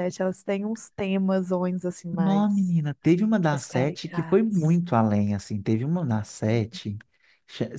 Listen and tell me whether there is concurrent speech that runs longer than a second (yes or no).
yes